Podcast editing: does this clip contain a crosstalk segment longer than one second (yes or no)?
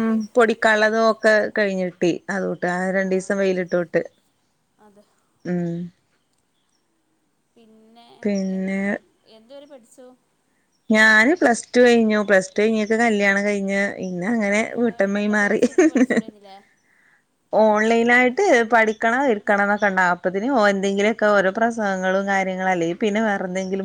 no